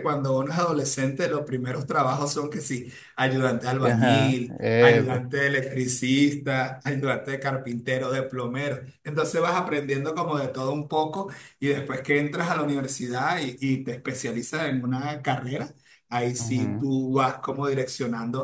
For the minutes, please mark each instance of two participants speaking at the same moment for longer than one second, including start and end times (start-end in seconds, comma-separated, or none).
3.8-5.2